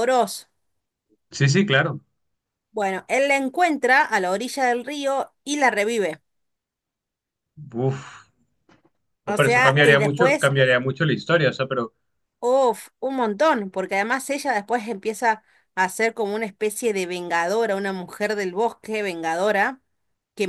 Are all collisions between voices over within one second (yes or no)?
no